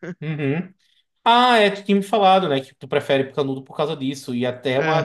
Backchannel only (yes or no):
yes